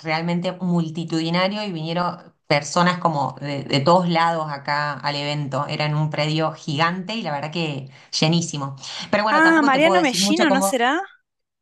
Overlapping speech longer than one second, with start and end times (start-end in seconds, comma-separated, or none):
9.3-10.7